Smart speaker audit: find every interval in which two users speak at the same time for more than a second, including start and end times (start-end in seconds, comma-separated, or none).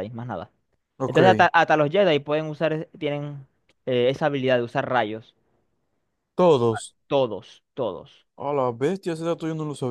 none